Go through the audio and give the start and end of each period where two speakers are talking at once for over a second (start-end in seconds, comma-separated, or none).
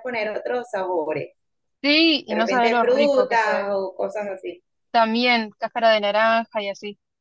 2.3-3.7